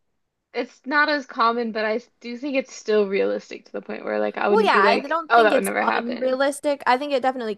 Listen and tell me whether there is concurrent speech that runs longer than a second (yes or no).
yes